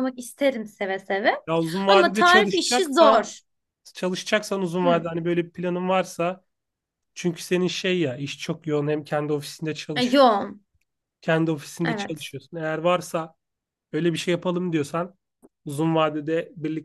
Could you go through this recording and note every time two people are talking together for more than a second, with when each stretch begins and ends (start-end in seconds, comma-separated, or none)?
1.9-3.3